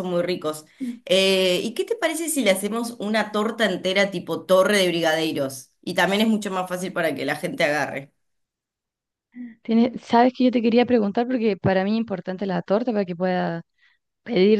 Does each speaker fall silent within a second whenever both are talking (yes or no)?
yes